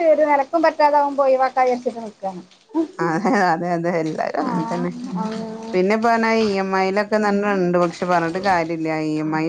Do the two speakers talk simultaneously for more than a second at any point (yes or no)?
no